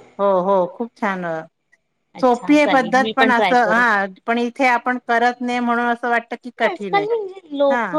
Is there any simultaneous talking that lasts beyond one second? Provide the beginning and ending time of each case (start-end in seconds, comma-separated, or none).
2.2-3.8